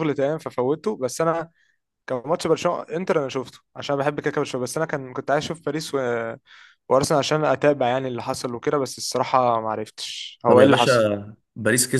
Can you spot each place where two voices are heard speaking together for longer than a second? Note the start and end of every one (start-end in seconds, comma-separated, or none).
none